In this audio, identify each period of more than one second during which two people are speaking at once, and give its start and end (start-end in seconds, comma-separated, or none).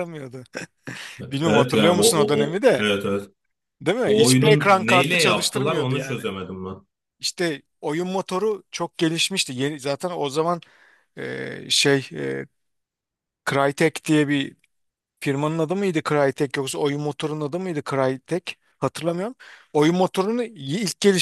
1.4-2.9, 4.0-6.3